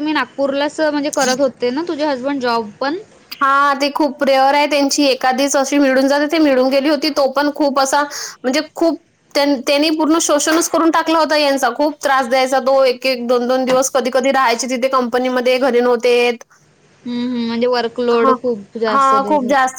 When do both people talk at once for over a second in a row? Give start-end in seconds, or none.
none